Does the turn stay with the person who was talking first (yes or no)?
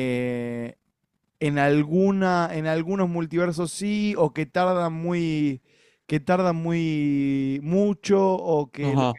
no